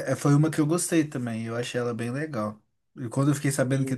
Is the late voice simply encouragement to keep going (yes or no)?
yes